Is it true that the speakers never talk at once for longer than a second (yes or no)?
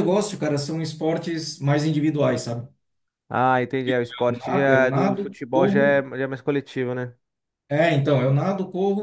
no